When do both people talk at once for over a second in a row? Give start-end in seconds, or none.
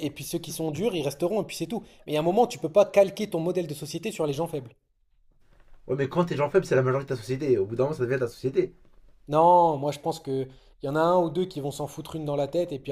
none